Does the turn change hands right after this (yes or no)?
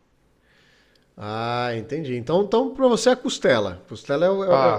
yes